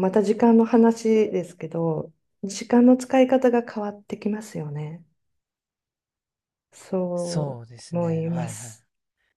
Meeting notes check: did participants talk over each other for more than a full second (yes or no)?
yes